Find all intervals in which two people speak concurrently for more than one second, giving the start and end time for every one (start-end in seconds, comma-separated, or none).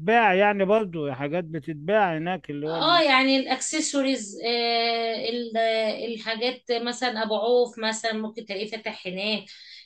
none